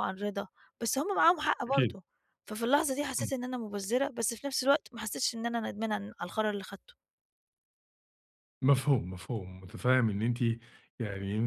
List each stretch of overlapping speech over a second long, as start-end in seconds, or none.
none